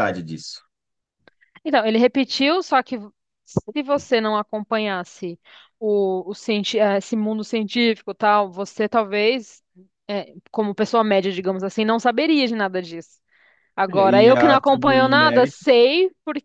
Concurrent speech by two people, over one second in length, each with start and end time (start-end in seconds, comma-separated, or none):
13.9-15.6